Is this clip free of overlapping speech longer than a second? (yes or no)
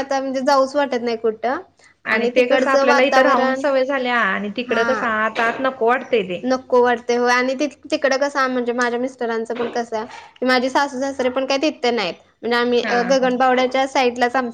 no